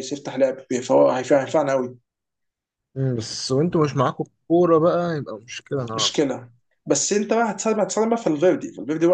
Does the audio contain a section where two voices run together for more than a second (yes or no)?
no